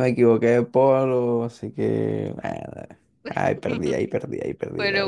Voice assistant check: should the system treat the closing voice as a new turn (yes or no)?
no